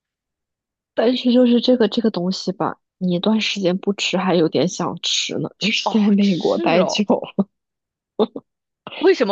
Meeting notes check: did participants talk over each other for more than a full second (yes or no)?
yes